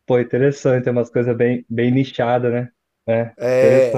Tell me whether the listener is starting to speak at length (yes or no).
yes